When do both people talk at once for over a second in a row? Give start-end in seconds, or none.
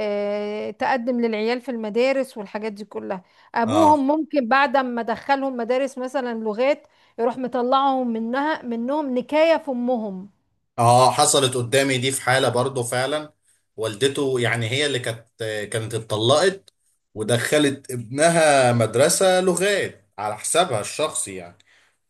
none